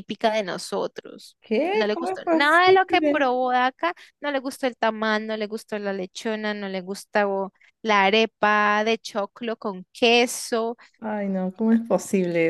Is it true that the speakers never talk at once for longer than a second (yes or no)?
no